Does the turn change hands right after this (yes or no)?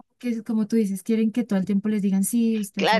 yes